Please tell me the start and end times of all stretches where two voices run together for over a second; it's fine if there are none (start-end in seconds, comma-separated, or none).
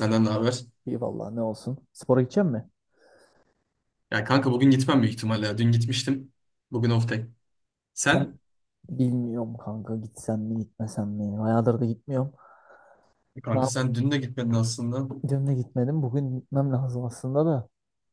none